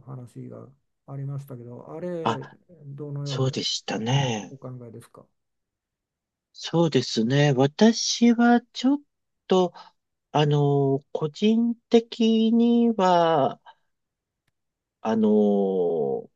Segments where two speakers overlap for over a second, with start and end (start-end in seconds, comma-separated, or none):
none